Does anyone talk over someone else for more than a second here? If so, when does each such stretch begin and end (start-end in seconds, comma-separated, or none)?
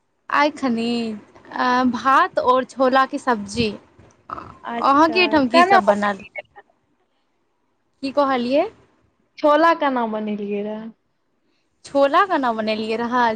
4.7-6.2